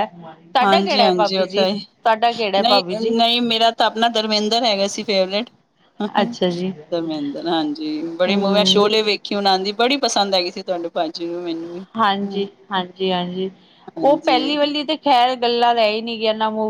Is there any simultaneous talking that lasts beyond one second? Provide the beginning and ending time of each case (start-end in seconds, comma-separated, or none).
0.6-1.9